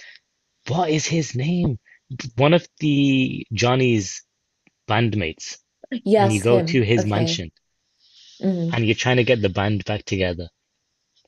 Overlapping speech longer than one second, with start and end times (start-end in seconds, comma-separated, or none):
6.2-7.4